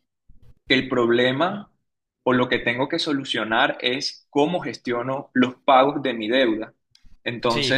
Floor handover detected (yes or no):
no